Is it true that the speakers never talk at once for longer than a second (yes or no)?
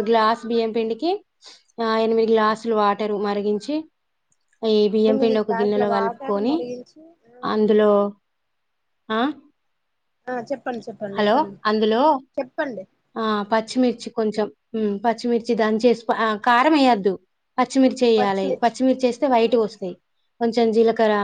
no